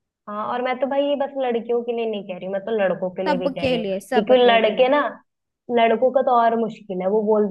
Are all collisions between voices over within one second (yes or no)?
no